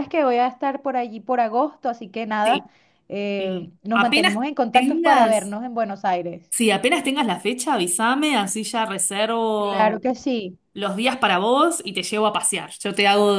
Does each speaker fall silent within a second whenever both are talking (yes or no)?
no